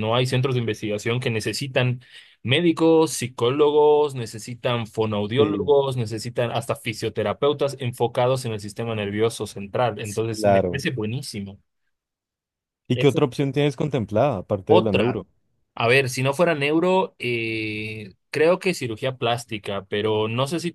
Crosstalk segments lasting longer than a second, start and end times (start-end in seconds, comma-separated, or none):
none